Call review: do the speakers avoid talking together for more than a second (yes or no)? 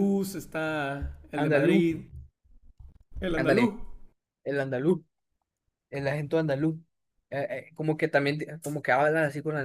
yes